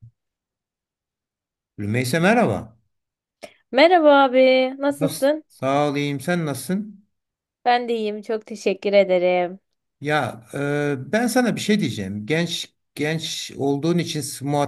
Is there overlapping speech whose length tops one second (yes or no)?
no